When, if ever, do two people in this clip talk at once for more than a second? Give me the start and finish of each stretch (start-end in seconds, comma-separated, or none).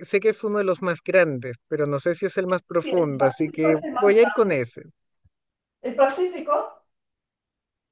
2.8-4.5